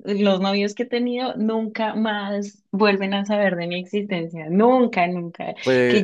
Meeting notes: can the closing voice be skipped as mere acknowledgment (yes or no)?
yes